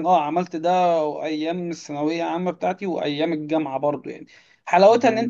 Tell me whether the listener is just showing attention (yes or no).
yes